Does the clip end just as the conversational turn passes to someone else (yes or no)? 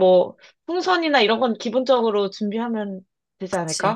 yes